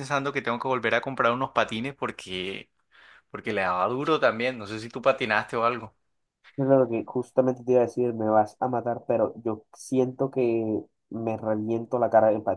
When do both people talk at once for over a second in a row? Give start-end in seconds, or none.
none